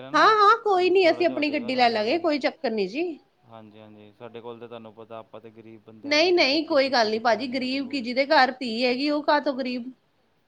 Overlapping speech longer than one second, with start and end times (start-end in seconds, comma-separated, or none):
0.8-2.2